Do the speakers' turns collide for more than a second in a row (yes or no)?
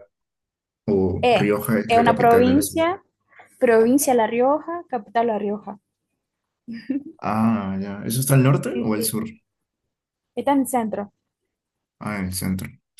yes